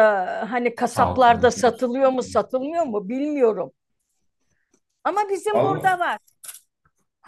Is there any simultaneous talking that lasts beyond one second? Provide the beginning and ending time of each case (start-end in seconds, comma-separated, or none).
0.9-2.4